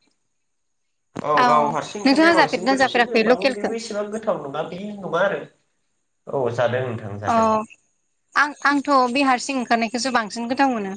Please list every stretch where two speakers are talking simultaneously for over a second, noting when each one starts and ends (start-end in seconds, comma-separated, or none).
2.0-3.7